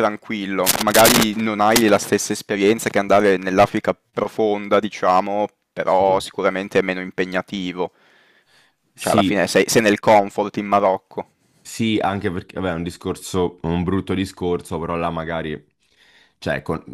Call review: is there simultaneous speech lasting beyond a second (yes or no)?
no